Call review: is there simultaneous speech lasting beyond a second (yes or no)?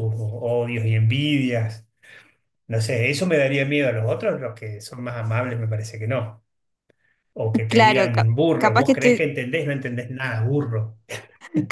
yes